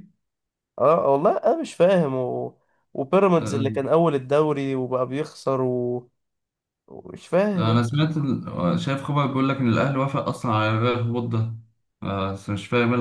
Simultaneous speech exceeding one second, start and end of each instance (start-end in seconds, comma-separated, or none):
none